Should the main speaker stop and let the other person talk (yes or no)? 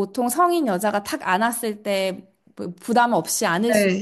yes